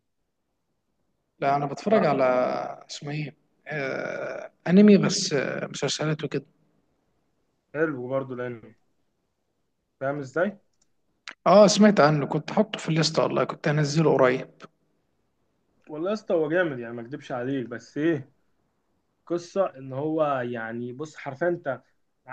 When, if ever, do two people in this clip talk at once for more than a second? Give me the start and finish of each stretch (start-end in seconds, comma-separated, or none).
none